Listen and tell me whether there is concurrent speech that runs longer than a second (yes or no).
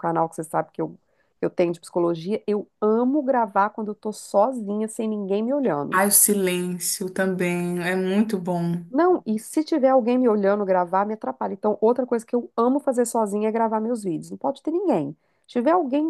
no